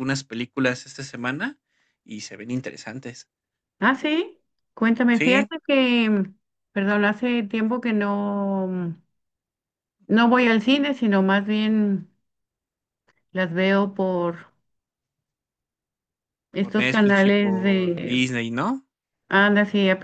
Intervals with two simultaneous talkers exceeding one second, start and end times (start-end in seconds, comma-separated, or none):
16.6-18.3